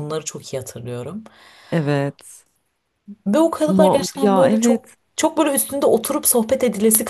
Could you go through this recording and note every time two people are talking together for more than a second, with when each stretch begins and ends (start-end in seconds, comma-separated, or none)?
3.7-5.0